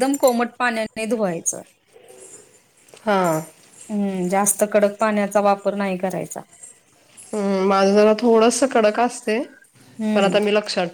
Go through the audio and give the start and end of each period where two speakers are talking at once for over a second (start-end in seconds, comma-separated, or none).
none